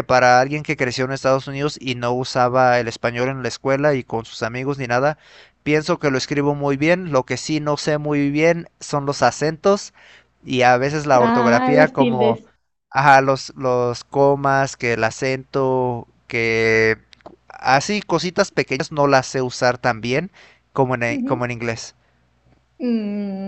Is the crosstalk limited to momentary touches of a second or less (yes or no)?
no